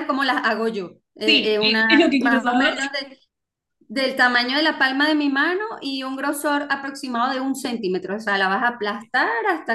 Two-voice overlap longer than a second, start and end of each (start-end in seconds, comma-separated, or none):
1.2-2.8